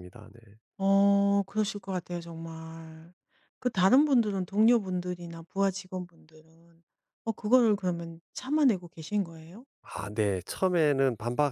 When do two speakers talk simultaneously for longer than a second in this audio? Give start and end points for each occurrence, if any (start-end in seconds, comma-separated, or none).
none